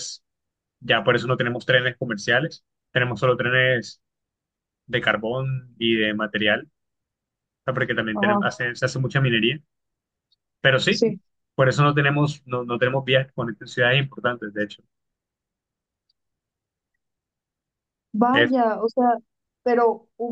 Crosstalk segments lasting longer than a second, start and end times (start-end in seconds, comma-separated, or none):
none